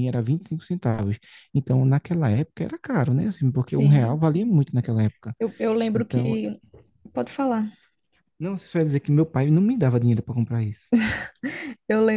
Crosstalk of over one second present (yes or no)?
no